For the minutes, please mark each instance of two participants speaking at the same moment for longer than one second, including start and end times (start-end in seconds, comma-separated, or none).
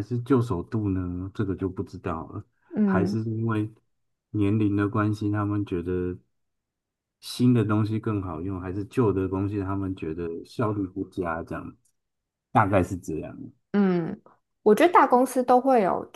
none